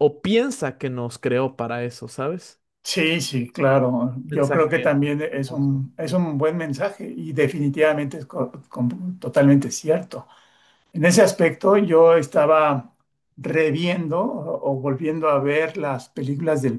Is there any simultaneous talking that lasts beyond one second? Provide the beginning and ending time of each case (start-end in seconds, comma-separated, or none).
4.2-5.8